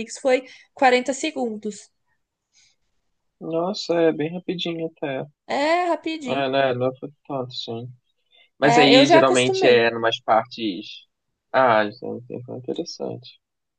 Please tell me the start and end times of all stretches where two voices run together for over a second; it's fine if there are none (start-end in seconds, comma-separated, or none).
8.6-9.9